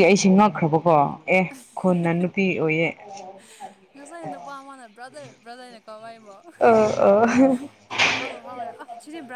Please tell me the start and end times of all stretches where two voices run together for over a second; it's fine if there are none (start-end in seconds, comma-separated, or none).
none